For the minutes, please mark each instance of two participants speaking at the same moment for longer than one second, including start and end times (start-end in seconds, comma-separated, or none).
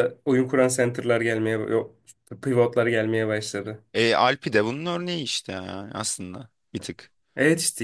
none